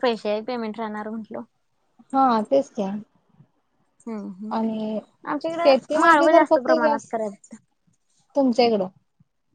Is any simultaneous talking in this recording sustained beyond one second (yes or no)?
yes